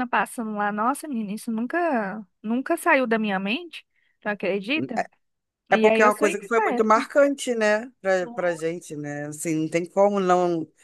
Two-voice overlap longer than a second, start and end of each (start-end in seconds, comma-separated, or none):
5.7-7.0